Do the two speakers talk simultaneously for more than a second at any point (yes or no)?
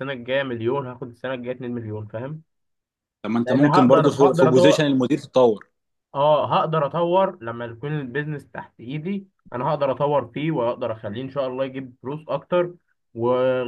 yes